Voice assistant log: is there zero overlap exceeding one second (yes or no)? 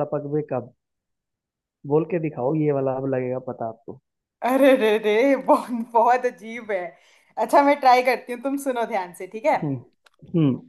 yes